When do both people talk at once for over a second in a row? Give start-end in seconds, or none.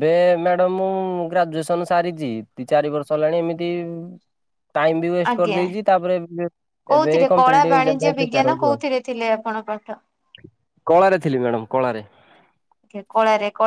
7.0-8.8